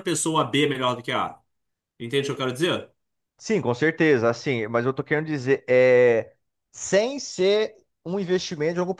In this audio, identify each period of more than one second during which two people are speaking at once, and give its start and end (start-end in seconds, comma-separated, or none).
none